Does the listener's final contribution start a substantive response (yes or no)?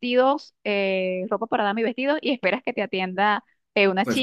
no